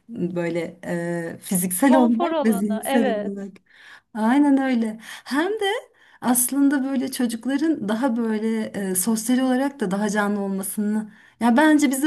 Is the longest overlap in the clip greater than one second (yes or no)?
yes